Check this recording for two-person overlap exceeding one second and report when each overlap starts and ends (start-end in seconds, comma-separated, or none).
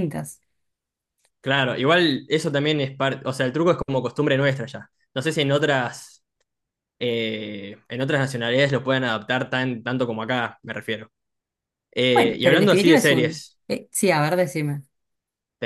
12.1-13.6